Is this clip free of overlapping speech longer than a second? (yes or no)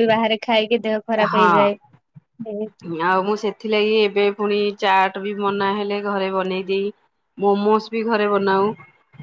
yes